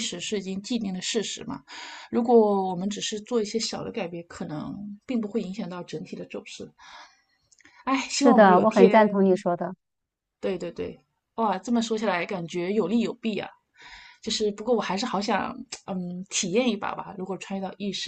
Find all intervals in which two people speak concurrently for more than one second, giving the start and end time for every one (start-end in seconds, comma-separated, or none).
8.1-9.4